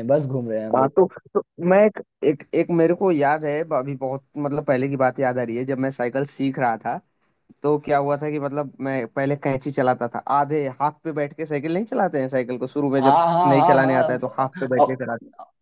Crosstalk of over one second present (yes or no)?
yes